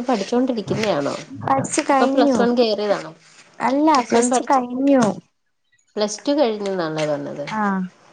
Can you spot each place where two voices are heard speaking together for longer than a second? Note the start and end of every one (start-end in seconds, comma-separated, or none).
none